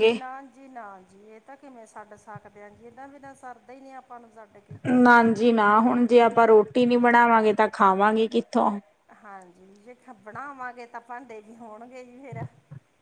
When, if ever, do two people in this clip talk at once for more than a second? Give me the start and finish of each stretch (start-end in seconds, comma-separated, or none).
none